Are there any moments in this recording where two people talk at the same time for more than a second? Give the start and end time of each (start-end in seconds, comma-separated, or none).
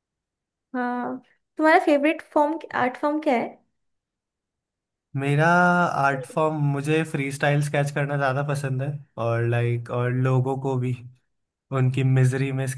none